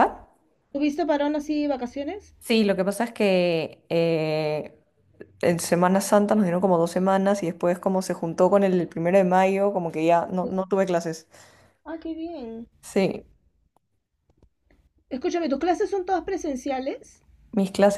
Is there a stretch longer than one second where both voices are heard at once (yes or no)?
no